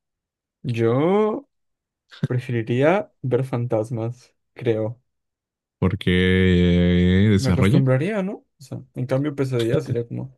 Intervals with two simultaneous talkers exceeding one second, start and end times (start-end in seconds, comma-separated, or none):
none